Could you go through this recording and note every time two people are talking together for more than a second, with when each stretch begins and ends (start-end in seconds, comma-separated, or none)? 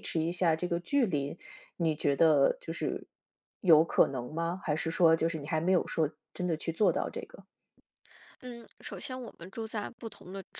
none